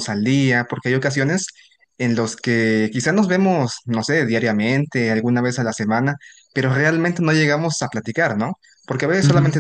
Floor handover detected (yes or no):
no